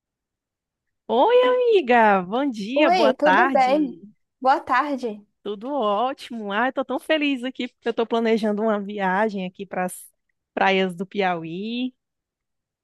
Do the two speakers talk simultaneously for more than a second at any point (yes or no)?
yes